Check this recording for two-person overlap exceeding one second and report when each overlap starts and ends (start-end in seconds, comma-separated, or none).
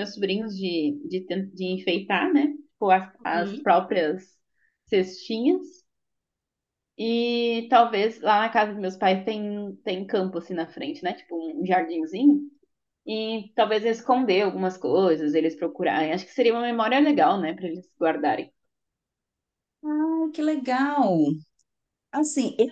none